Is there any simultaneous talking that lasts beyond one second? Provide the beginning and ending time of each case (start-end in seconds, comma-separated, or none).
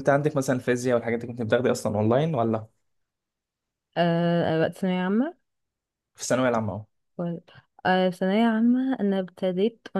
none